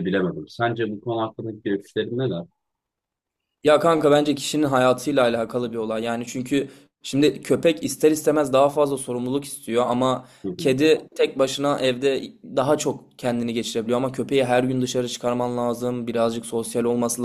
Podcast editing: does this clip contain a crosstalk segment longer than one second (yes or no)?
no